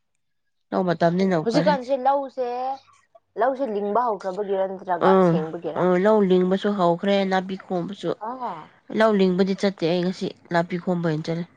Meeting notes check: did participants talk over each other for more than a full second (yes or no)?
no